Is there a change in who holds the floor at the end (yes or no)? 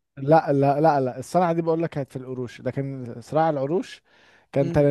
yes